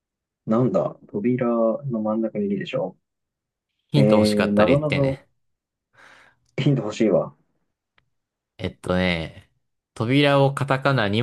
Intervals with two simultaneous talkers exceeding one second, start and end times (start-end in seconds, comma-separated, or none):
3.9-5.2